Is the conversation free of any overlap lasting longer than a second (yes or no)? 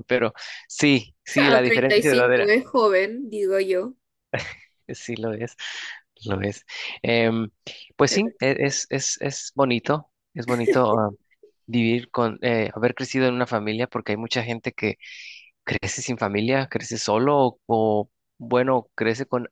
no